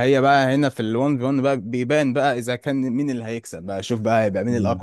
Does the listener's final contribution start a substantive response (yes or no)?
no